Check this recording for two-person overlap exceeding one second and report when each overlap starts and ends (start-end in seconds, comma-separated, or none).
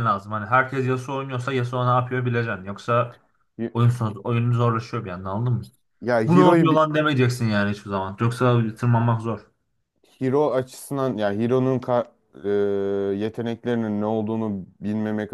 none